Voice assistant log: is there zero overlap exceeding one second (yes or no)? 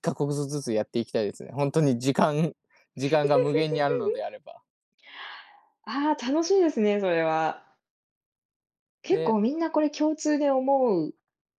yes